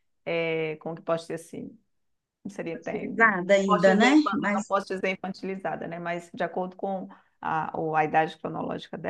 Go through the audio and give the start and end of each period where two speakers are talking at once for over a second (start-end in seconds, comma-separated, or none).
2.7-4.7